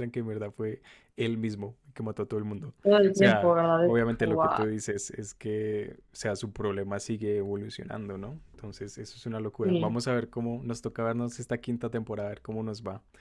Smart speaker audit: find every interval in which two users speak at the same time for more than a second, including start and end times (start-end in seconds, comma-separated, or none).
3.1-4.7